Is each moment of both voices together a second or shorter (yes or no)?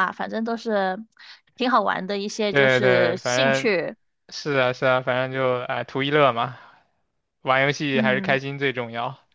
no